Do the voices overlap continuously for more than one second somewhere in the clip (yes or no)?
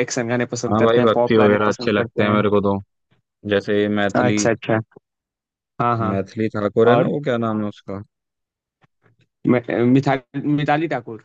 yes